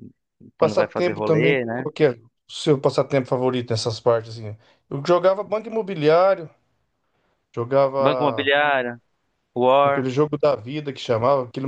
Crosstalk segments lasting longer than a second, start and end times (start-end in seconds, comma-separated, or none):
0.6-1.9